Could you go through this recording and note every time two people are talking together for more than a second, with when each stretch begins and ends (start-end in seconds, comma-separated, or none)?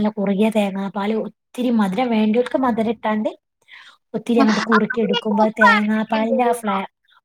4.4-6.7